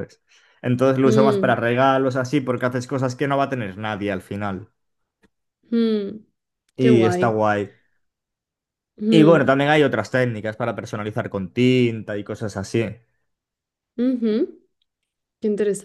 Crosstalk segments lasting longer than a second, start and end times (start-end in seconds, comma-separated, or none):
none